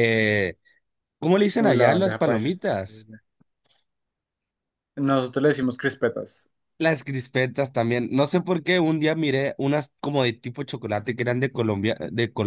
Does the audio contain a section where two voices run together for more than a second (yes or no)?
yes